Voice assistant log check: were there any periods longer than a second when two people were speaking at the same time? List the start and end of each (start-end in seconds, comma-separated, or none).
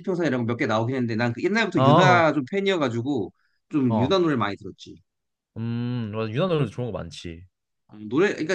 none